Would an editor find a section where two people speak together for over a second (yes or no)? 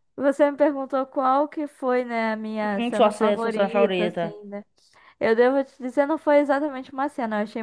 yes